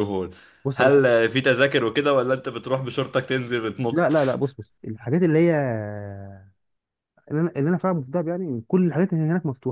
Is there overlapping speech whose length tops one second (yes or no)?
no